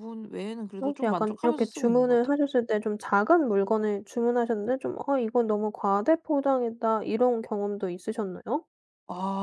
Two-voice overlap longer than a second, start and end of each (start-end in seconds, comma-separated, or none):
0.8-2.4